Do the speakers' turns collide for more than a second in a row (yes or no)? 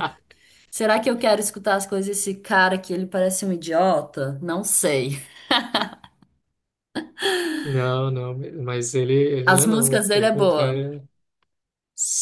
yes